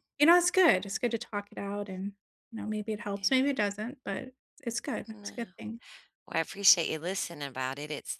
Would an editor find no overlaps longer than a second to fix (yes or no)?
yes